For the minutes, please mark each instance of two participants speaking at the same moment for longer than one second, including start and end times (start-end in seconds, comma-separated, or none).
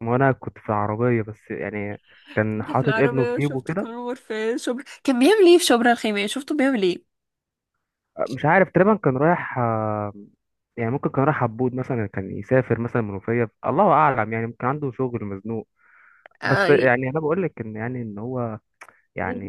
2.5-3.9